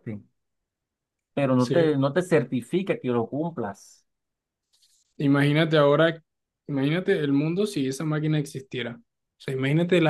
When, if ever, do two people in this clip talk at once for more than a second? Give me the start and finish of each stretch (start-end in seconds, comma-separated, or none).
none